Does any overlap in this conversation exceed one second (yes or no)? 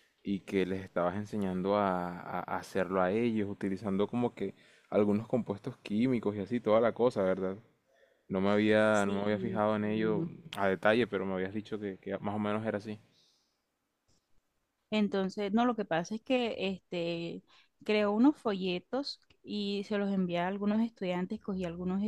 yes